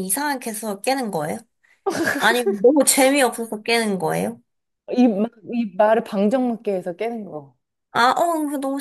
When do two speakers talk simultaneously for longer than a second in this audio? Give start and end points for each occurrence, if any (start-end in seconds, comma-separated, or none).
none